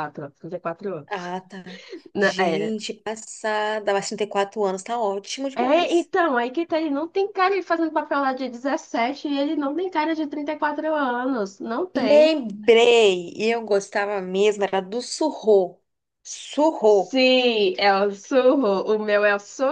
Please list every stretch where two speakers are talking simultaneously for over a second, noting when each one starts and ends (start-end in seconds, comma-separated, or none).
none